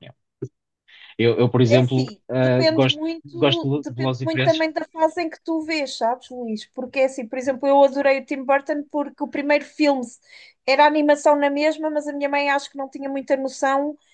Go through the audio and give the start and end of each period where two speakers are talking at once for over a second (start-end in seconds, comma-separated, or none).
1.6-4.6